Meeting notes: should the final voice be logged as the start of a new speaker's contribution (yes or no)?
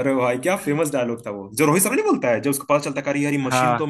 no